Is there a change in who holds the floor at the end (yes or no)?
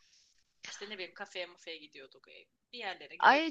yes